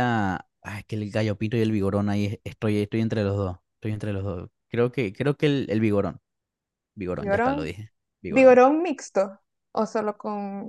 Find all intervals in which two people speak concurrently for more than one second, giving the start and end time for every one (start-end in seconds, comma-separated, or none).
none